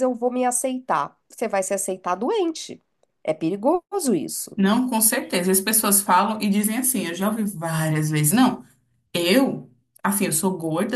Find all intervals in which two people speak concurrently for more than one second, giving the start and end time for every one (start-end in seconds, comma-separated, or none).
none